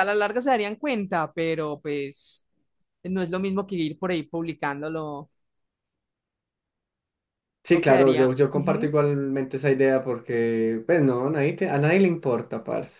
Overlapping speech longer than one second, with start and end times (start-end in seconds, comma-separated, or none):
7.7-8.9